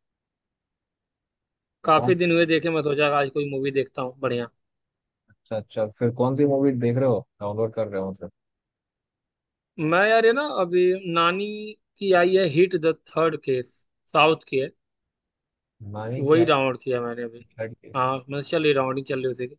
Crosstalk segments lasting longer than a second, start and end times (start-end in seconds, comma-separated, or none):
none